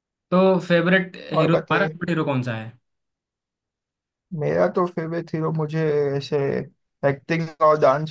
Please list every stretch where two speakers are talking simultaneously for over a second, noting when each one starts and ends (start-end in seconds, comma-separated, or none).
none